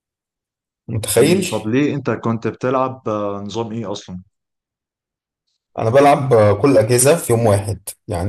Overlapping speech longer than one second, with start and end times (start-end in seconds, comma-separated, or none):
none